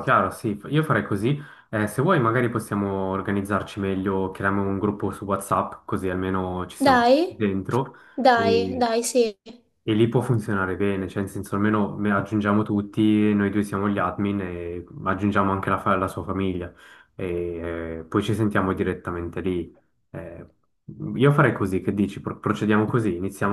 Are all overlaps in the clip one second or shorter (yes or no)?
yes